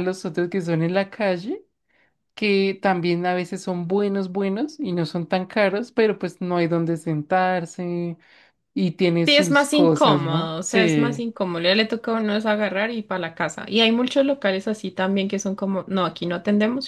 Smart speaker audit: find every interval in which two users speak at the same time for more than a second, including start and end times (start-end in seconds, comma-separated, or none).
9.2-11.2